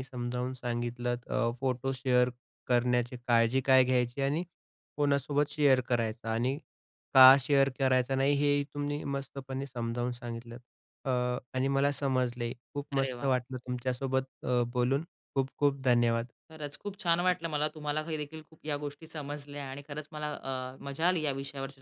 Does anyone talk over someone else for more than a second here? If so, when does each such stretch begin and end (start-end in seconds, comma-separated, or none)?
none